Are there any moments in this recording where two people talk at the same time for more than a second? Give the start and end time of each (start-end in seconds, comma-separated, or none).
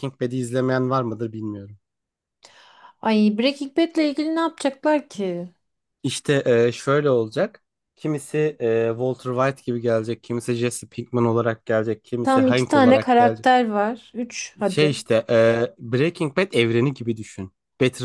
12.2-13.5